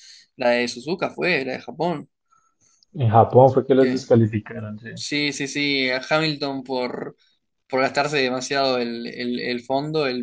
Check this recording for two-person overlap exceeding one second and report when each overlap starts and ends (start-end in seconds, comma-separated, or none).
none